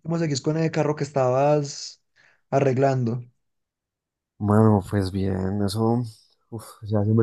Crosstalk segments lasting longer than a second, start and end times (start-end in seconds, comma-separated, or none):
none